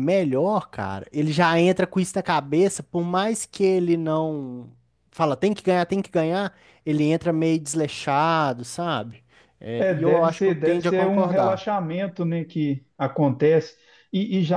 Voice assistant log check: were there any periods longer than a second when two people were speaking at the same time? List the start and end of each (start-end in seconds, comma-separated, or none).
9.8-11.7